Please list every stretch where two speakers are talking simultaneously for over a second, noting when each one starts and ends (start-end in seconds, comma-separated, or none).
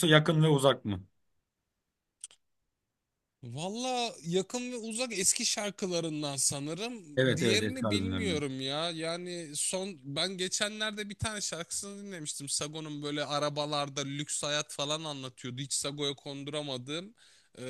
7.2-8.4